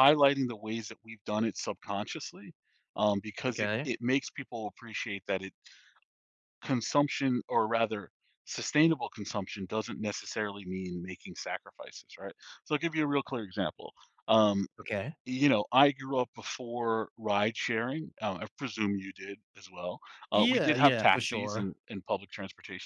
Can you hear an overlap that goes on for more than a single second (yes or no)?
yes